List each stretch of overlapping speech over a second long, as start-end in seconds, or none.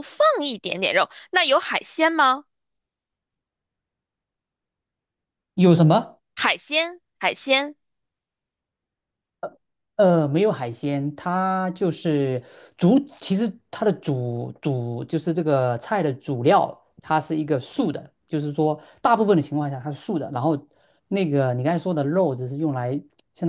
none